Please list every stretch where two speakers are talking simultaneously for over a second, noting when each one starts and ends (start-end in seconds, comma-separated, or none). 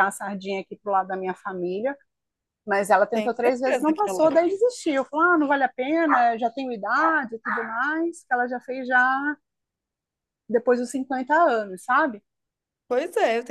3.1-4.4